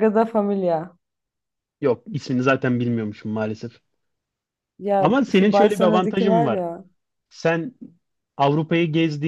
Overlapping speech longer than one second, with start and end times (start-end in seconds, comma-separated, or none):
5.0-6.6